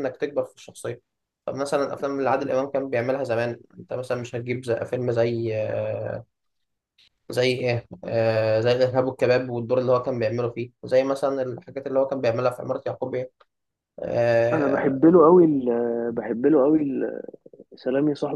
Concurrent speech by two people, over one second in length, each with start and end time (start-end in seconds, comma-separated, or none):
none